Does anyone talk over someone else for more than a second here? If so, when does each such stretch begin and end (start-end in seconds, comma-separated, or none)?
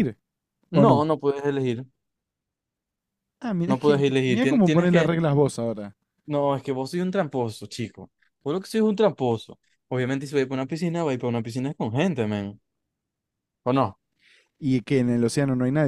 3.7-5.1